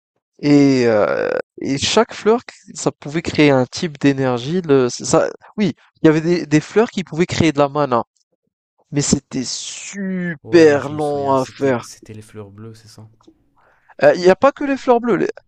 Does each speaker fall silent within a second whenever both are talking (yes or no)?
no